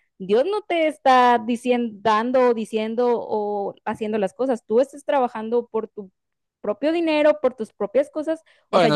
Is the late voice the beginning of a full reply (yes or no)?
yes